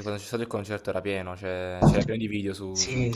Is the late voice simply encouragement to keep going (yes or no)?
yes